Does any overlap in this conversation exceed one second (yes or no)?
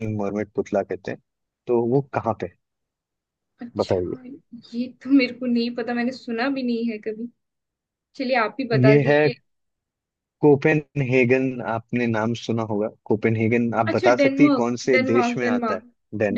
yes